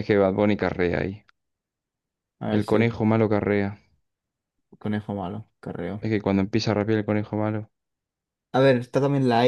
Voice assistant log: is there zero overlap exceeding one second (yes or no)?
yes